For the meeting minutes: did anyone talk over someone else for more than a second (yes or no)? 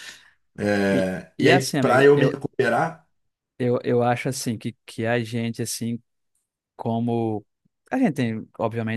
yes